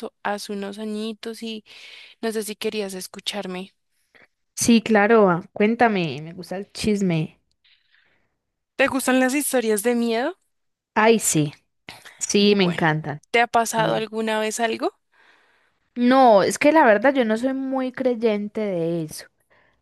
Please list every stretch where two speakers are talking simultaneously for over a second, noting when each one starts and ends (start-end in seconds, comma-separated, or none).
none